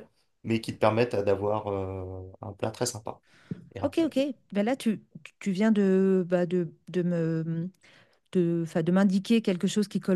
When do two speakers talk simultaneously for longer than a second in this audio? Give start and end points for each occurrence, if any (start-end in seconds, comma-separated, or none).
none